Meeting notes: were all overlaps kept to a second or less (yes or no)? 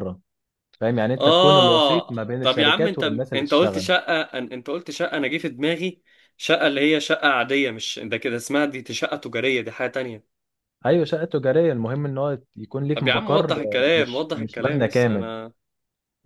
no